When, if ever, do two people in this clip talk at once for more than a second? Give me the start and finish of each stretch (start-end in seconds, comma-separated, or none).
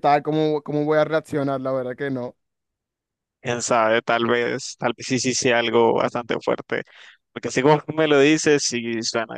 none